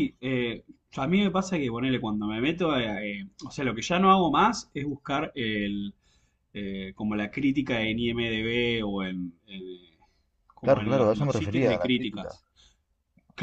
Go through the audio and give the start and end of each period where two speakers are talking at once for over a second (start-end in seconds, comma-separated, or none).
10.6-12.3